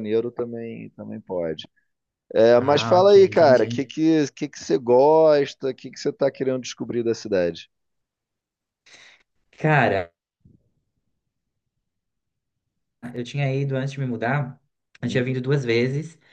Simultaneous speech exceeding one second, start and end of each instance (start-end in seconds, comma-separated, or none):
2.5-3.8